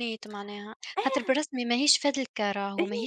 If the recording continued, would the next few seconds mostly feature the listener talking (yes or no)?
no